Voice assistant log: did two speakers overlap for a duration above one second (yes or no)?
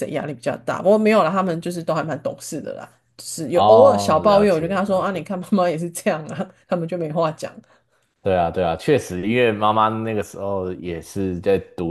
yes